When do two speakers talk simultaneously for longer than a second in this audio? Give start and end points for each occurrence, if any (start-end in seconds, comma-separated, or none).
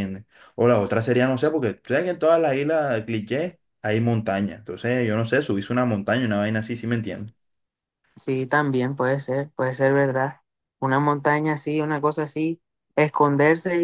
none